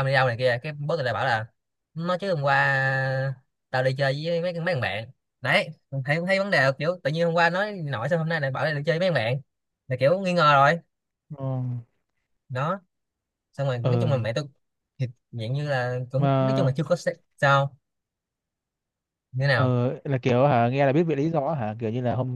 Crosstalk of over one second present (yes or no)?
no